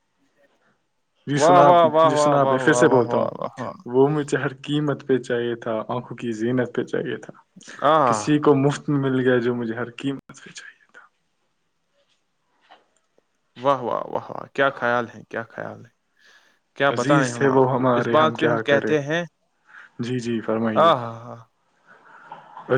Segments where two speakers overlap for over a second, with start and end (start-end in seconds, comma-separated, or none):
1.4-3.3, 16.9-18.9